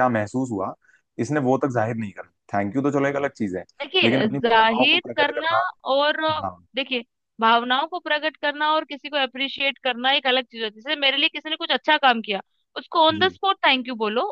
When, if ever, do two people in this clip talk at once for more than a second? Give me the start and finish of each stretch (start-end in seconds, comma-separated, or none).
4.0-5.5